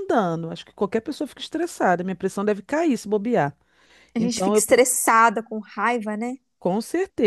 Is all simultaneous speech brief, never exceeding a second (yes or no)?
yes